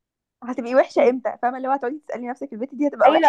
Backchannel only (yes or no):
no